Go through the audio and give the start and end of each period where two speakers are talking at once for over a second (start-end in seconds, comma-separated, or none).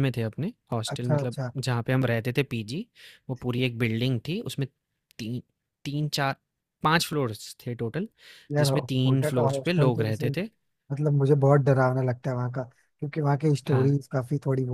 8.6-10.2